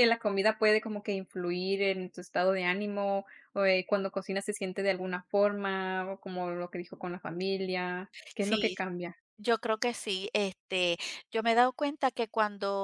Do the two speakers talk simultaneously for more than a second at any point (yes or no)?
no